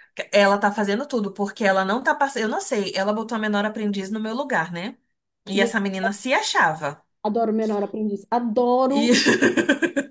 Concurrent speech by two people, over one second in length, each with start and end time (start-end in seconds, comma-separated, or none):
none